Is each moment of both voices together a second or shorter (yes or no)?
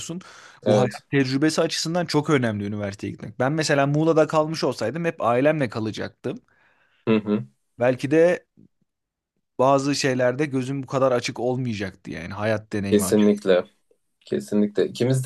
yes